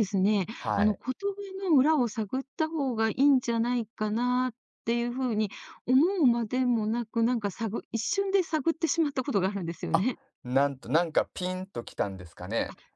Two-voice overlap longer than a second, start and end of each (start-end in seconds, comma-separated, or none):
none